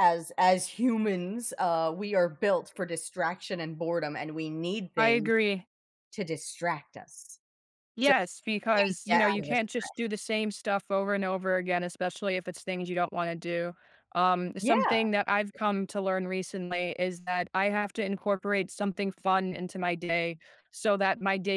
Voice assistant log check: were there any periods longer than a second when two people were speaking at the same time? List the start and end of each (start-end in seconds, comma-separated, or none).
8.7-10.1